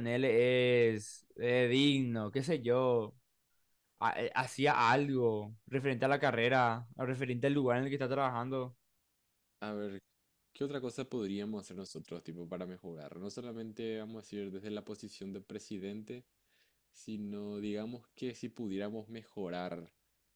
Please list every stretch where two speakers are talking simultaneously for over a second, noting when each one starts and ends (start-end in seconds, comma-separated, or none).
none